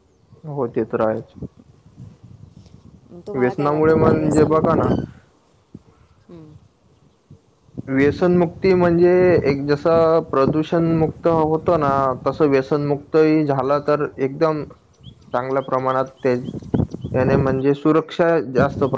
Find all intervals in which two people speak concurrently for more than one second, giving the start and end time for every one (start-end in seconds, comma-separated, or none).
3.3-4.9